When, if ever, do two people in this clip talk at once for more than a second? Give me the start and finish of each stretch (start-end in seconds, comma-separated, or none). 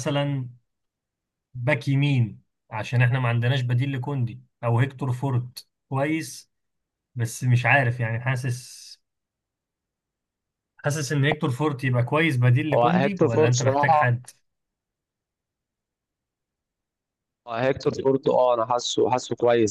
12.7-14.2